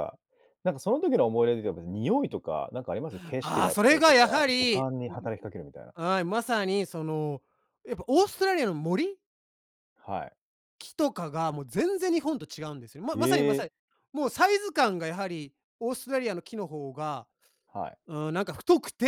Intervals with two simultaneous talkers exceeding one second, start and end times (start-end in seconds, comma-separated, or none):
3.4-5.2